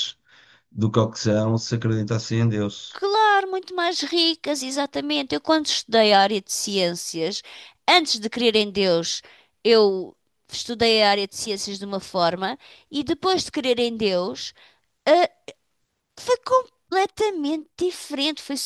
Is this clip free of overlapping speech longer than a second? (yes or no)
yes